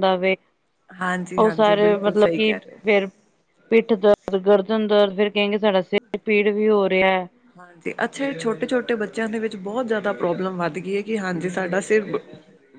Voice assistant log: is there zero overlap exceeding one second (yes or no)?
no